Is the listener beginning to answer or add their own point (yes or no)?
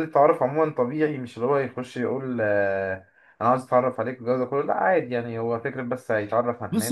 yes